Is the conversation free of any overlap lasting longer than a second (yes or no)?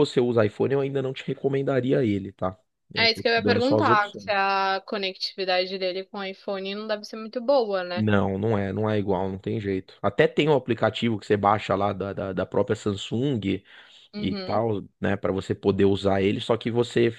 no